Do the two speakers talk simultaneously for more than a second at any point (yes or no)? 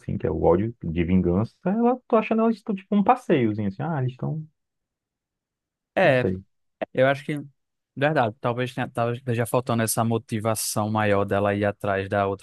no